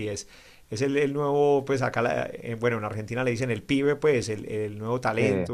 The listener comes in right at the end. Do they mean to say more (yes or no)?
no